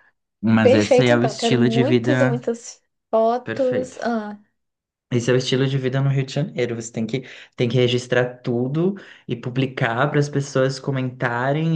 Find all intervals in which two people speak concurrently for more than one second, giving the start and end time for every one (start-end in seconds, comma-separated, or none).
0.6-2.4